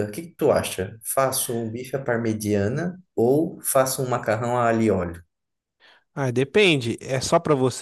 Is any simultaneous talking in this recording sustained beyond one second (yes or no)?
no